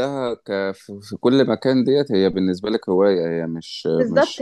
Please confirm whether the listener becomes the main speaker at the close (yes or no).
yes